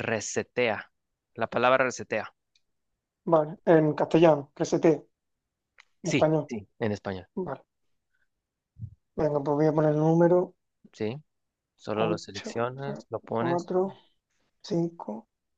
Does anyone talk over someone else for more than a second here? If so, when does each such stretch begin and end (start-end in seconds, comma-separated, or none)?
11.9-13.7